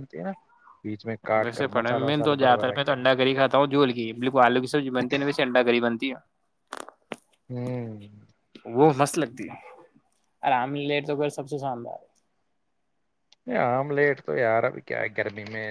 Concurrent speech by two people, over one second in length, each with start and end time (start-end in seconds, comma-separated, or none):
1.4-2.9